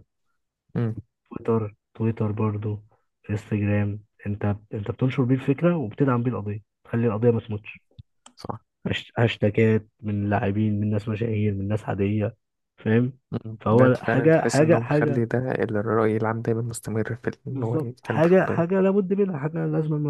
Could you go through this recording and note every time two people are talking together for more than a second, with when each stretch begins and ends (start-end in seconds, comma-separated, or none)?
13.6-15.2, 17.5-18.8